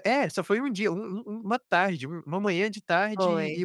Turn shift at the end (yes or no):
no